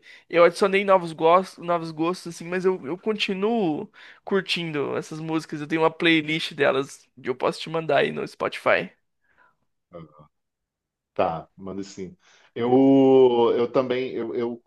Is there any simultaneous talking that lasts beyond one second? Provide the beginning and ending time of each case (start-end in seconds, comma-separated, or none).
none